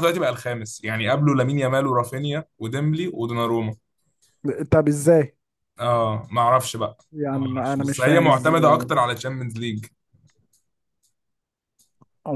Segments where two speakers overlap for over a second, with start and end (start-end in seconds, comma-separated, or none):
7.3-8.9